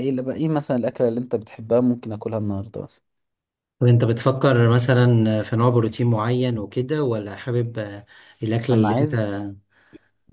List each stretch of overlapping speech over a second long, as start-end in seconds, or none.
none